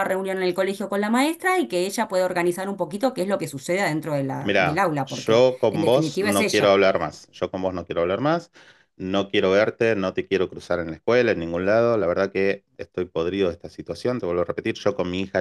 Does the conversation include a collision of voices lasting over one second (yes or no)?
yes